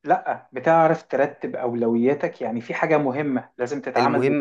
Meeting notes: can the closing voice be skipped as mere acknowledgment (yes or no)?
no